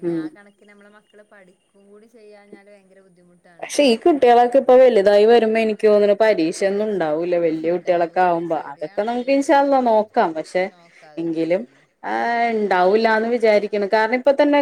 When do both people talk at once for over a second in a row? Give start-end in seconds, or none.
7.7-9.9